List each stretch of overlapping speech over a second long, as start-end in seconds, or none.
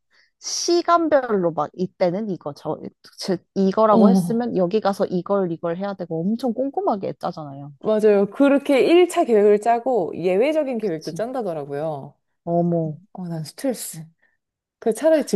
none